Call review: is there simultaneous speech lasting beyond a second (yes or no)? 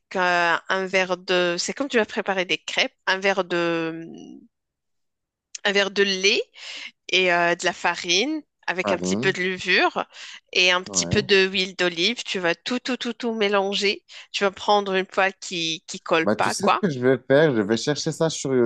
no